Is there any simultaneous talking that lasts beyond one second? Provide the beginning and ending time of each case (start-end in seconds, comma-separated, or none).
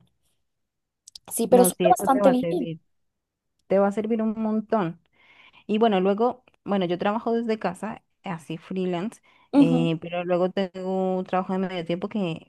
1.5-2.7